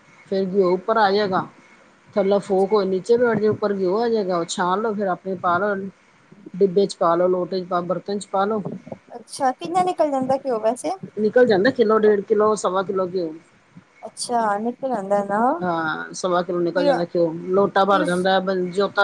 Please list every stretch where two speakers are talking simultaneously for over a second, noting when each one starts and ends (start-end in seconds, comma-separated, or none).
none